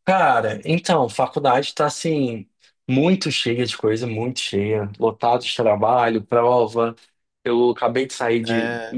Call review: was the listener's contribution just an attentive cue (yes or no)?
yes